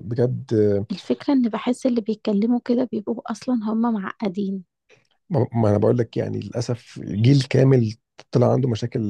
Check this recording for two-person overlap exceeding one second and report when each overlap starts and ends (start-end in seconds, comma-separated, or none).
none